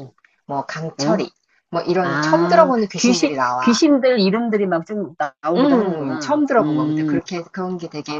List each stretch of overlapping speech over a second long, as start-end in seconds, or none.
2.0-3.8, 5.6-7.2